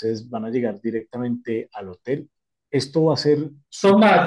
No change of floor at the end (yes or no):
no